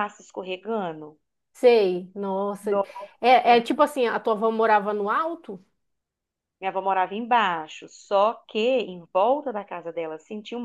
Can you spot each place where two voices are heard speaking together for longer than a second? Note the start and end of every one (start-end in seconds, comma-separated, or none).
none